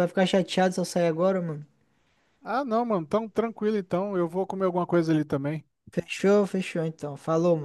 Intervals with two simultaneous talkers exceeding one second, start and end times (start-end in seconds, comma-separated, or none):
none